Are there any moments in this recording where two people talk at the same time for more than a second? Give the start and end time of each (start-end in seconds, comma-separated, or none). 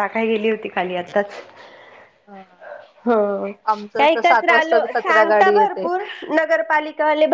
3.7-5.8